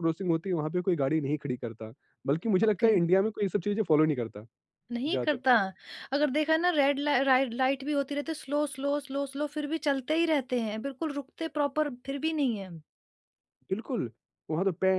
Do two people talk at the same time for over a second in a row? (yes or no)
no